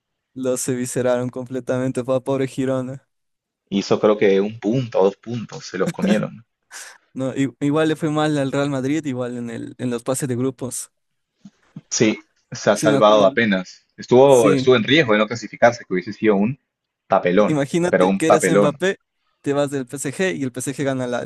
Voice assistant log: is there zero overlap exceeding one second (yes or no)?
no